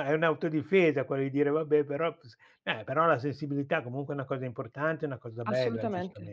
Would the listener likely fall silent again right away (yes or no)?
no